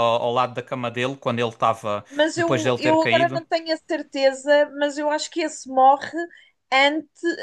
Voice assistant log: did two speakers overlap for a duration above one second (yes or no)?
yes